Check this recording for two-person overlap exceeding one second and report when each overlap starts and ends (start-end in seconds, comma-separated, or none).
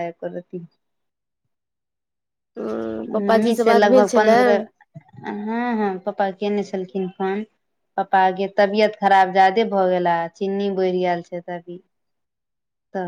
3.1-4.4